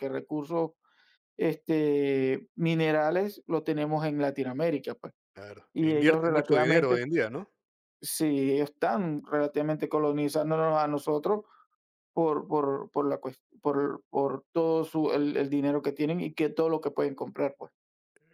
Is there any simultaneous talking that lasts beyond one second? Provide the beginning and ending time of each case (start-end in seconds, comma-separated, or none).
5.7-7.0